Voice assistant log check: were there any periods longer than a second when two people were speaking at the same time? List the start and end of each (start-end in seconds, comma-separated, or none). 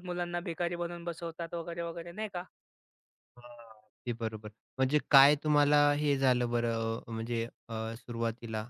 none